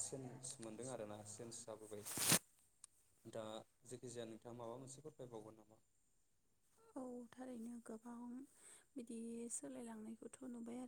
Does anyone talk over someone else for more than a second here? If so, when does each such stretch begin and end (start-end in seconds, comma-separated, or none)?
none